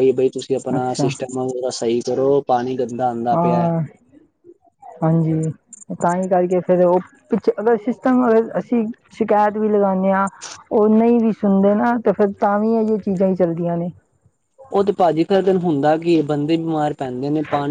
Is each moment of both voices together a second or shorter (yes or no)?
yes